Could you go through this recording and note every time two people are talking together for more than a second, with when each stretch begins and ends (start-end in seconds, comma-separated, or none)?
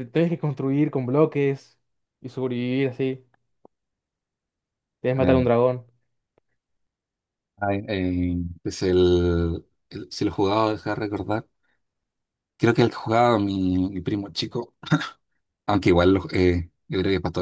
none